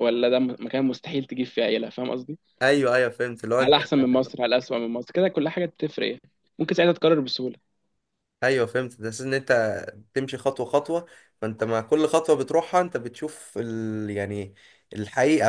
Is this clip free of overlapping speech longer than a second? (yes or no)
yes